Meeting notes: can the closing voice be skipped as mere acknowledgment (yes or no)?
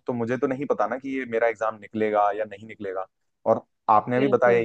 yes